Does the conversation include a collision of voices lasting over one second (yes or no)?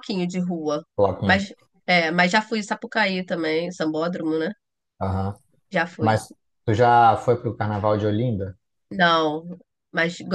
no